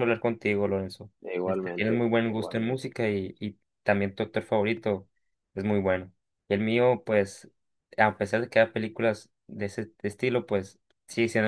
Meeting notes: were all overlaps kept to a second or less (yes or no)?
no